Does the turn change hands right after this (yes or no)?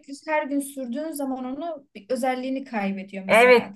yes